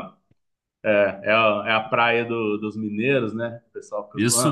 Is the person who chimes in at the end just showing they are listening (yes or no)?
no